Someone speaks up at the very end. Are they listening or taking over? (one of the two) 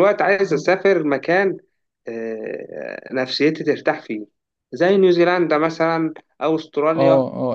taking over